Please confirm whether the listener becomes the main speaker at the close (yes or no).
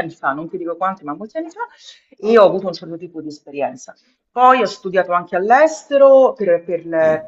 no